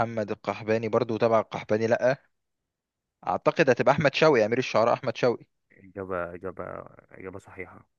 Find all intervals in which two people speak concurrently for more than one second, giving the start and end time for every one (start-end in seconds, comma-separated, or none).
none